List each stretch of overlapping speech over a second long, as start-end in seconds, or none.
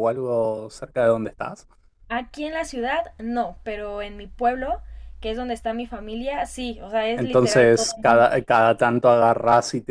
7.1-8.5